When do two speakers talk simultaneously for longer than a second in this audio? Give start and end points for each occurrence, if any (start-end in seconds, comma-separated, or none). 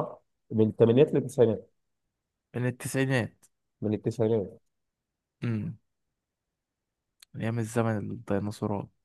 none